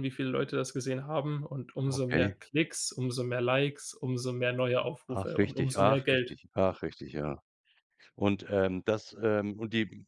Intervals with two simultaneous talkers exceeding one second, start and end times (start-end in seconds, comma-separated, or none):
5.1-6.4